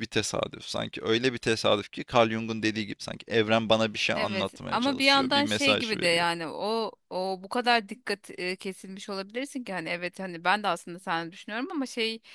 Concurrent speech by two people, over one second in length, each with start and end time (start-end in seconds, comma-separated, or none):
4.2-6.2